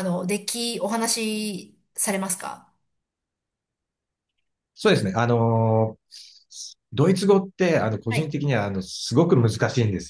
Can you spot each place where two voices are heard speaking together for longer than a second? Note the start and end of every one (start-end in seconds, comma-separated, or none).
none